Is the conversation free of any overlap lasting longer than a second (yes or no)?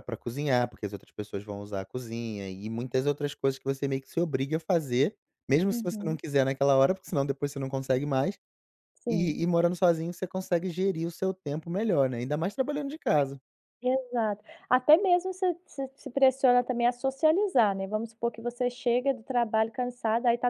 yes